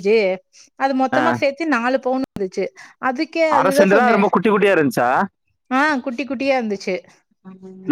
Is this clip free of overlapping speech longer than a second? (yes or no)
yes